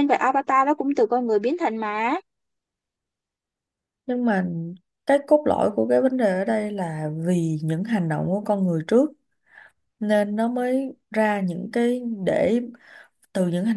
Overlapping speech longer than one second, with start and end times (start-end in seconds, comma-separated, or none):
none